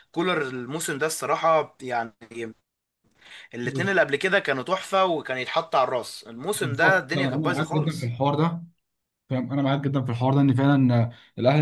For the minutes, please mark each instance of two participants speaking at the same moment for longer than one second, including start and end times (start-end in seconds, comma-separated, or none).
6.5-8.1